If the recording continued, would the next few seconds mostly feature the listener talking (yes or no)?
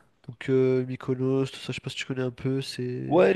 yes